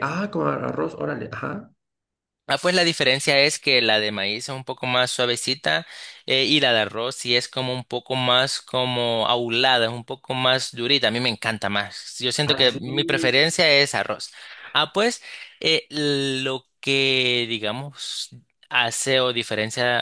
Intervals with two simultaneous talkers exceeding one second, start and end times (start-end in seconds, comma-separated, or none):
none